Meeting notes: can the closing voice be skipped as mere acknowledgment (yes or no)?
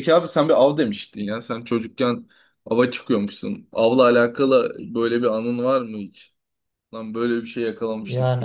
no